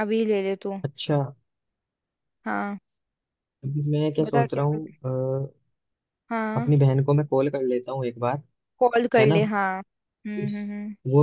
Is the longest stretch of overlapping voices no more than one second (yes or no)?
yes